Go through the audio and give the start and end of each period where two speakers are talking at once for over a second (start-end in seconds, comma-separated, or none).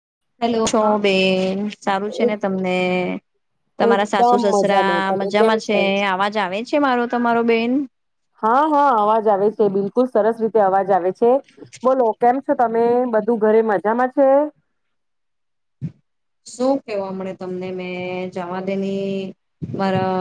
3.9-5.8